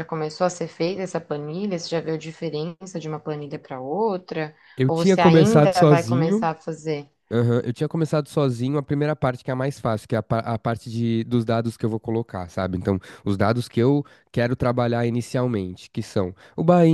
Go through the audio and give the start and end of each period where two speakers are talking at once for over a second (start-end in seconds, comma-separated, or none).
4.8-6.5